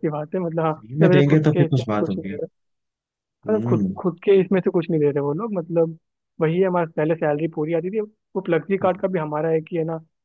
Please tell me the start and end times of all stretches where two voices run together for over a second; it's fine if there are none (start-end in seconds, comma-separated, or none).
0.8-2.4